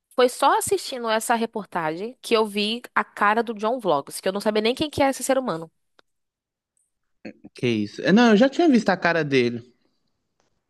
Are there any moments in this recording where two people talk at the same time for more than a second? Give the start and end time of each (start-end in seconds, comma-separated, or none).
none